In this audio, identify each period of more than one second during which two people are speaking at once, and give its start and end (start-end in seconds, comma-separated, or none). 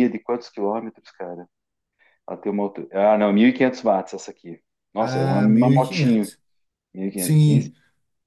5.0-6.3